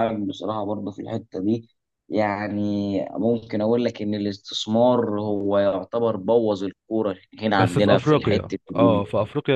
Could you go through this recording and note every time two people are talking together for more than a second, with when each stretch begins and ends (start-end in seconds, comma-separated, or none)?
7.6-9.0